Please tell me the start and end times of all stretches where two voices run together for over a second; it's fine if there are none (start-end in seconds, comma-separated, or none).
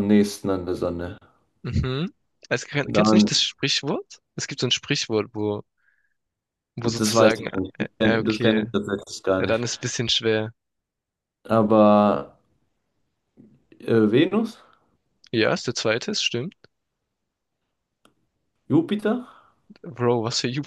6.8-8.7